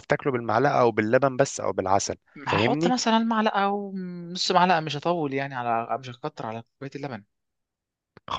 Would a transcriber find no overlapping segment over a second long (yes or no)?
yes